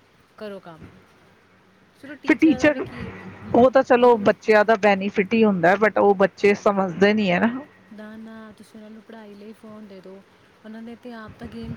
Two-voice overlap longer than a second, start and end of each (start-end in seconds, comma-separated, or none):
none